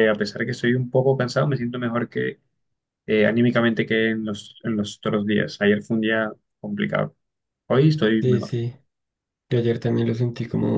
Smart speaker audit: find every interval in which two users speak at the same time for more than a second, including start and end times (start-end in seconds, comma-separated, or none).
none